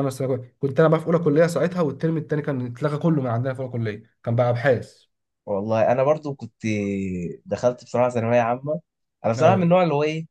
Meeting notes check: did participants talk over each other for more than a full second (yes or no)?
no